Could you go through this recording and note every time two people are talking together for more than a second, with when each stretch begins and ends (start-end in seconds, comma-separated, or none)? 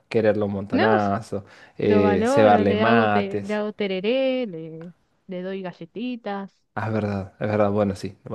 1.8-3.6